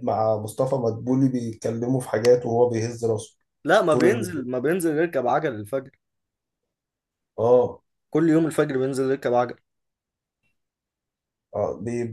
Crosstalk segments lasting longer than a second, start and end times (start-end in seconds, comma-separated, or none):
none